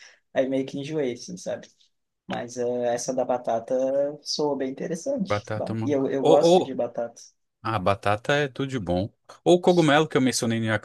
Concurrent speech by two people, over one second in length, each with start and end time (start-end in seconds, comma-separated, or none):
5.3-6.8